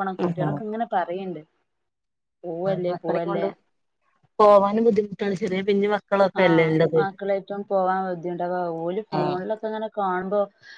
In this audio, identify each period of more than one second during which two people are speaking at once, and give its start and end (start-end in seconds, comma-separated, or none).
none